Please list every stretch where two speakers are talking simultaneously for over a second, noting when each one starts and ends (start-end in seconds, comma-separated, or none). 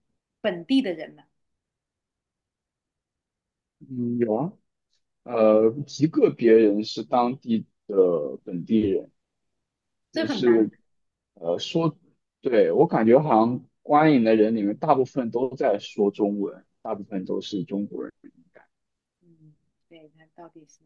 none